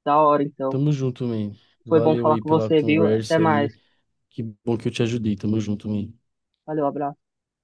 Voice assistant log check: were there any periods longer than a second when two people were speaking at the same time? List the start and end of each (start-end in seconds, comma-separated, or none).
1.9-3.7